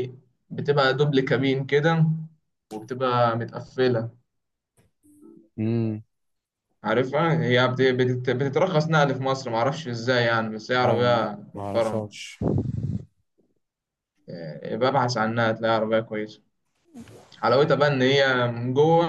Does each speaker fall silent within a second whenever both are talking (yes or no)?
no